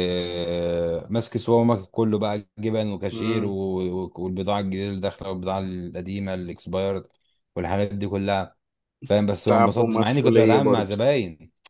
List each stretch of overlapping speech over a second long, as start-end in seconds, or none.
9.5-11.0